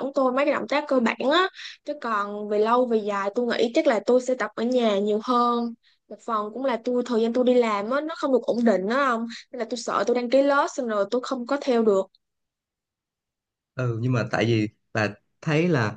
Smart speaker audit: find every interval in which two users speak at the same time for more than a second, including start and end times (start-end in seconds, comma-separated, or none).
none